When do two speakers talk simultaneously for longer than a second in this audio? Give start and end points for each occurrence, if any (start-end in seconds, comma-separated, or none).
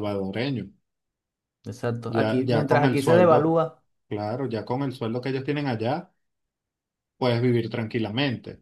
2.1-3.6